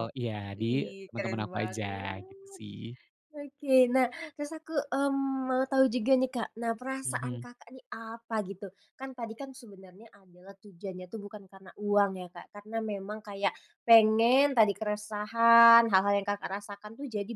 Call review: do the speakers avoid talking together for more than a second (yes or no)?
no